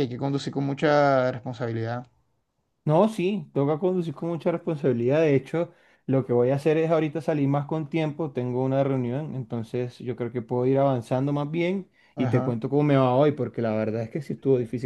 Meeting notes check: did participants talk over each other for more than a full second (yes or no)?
no